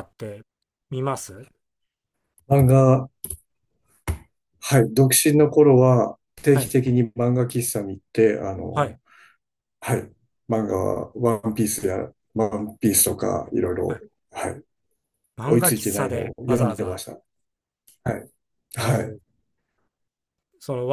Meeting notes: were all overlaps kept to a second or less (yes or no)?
no